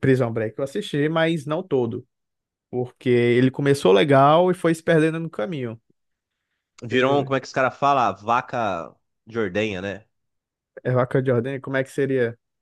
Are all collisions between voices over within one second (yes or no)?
yes